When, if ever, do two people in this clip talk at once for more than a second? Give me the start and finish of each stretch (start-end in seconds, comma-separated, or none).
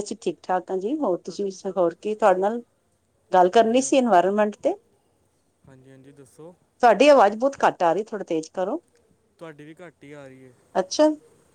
none